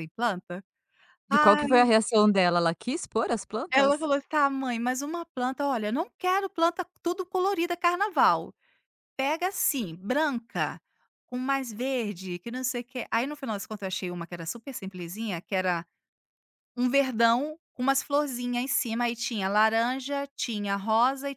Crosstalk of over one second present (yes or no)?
no